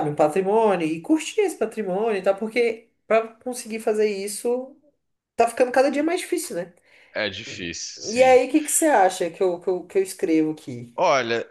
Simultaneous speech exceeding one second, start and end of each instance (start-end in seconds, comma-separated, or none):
none